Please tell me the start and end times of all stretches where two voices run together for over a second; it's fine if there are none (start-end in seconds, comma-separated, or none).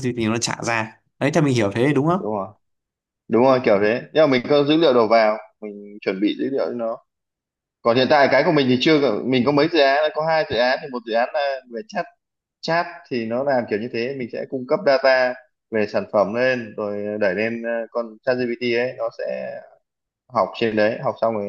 none